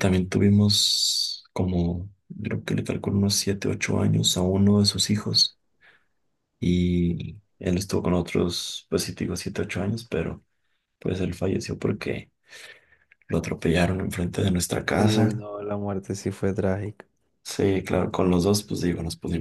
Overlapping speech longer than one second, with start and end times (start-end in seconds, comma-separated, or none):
none